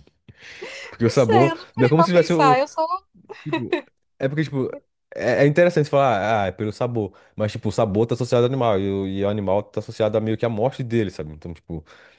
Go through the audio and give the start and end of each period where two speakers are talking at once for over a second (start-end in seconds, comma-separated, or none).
1.1-2.3